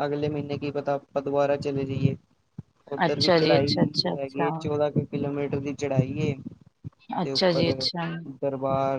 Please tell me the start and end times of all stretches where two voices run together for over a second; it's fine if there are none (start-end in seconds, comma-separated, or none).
3.0-4.8